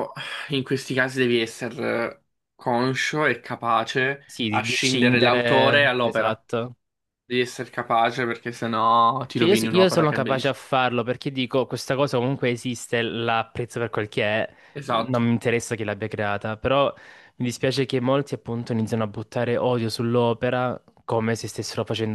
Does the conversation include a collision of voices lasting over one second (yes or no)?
yes